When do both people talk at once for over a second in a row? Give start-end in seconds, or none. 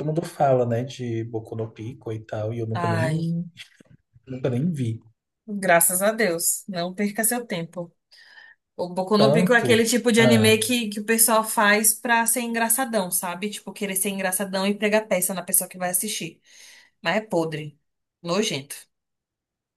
9.2-10.6